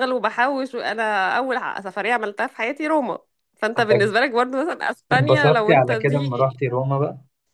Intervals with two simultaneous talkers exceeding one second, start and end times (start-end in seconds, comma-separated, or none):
5.1-6.6